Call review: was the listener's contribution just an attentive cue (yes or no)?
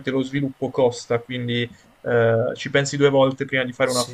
no